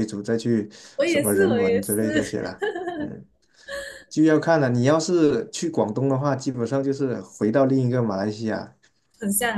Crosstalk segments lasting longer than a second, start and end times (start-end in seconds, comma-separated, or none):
1.1-2.4